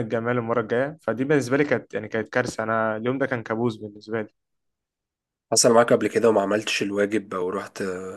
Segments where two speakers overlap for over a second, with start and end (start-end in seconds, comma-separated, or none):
none